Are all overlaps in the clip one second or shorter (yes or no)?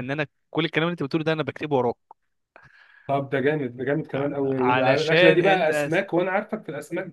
no